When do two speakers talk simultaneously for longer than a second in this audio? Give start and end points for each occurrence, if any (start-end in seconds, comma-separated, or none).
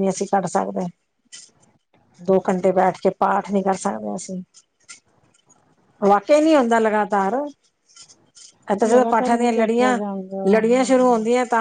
8.9-10.9